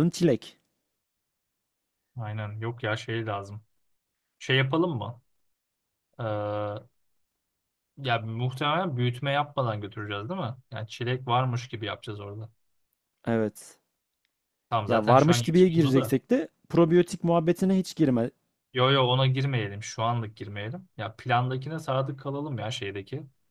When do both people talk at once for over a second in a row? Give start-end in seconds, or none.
14.9-16.1